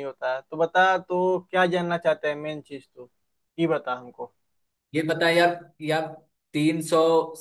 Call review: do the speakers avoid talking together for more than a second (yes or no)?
yes